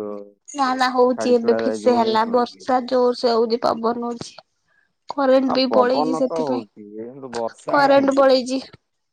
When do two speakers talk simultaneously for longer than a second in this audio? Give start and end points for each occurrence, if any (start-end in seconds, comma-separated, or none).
5.5-8.3